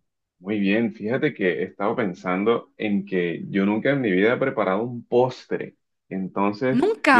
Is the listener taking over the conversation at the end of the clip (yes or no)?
no